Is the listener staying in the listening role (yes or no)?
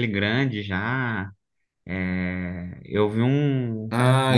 no